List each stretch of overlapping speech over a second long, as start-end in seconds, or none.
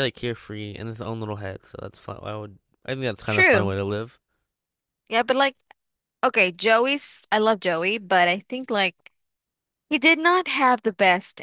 none